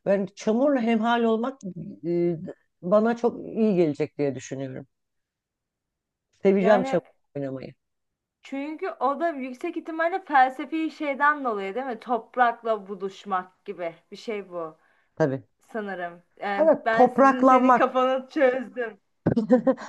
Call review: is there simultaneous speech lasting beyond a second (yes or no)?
yes